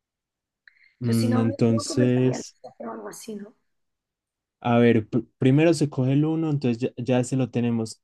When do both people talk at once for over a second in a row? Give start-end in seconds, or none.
1.0-2.6